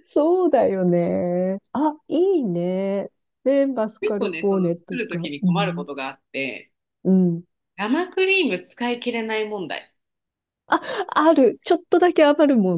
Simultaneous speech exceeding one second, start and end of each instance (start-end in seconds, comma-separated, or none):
4.0-5.8